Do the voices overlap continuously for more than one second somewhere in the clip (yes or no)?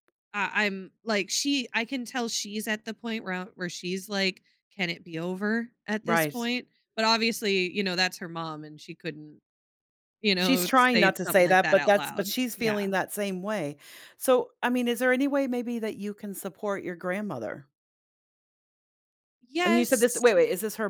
yes